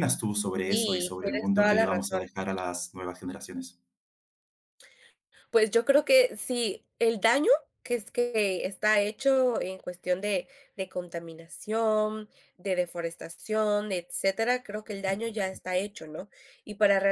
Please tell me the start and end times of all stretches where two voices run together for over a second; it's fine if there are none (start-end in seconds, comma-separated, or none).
0.7-2.2